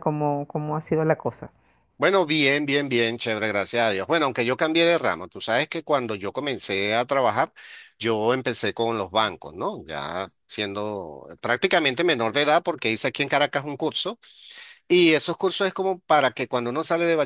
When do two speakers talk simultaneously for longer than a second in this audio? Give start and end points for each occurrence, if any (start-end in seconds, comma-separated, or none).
none